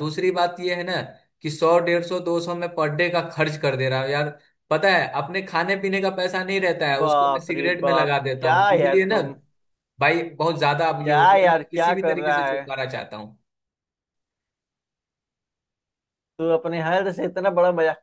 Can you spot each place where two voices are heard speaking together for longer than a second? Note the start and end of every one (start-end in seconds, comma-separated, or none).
7.0-9.2, 11.0-12.6